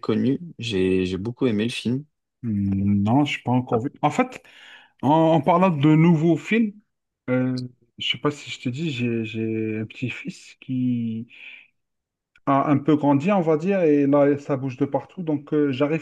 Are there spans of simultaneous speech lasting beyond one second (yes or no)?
no